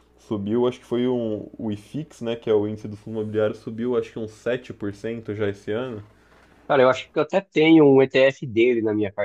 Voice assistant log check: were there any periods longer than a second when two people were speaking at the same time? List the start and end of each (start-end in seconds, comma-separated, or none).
none